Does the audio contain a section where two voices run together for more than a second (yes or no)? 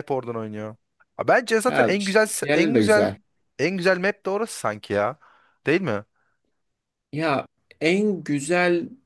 yes